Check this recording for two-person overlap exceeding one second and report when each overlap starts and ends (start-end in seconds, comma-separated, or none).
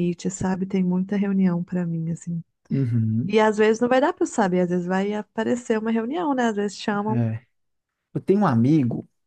none